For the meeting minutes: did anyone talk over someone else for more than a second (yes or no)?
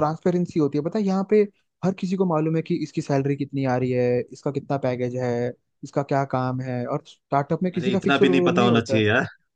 yes